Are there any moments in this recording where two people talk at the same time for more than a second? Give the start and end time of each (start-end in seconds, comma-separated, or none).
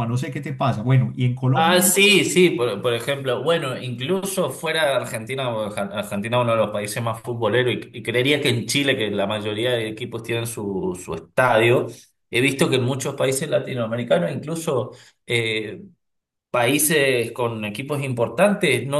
none